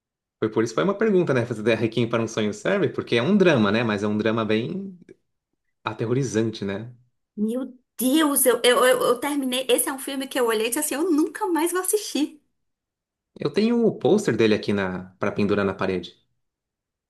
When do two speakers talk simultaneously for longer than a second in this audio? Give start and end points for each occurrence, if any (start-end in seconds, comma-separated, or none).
none